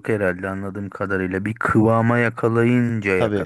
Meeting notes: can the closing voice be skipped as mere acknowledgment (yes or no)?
no